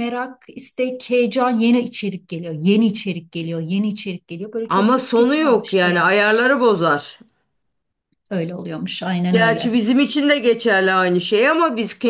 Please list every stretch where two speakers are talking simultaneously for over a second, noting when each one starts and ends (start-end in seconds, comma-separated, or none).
4.7-6.1